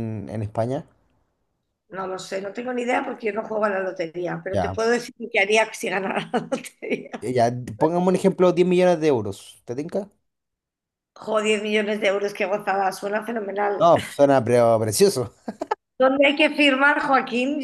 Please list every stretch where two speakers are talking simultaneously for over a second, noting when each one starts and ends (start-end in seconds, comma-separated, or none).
none